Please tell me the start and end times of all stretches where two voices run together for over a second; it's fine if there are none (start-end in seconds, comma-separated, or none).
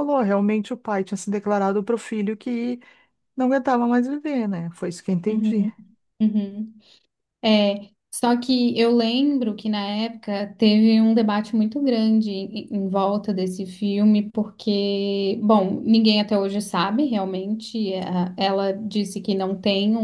none